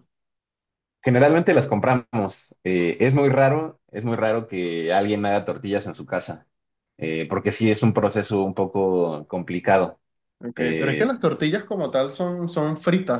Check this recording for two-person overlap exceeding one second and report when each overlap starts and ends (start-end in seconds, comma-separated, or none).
none